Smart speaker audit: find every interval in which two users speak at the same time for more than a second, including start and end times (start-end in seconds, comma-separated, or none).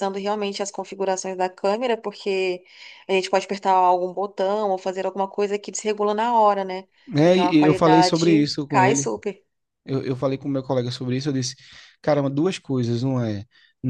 7.2-9.1